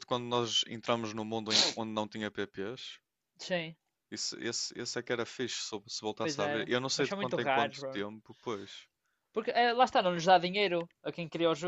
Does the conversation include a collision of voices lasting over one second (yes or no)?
yes